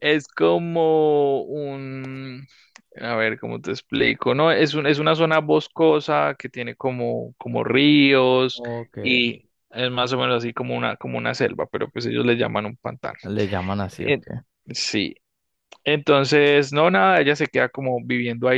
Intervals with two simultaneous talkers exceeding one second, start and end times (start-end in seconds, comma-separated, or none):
none